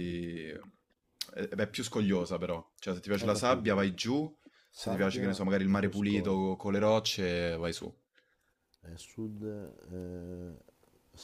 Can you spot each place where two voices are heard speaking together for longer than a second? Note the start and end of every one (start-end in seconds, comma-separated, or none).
4.7-6.5